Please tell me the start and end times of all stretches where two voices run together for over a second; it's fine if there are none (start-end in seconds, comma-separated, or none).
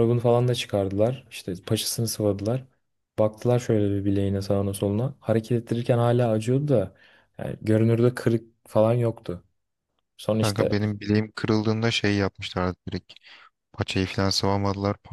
none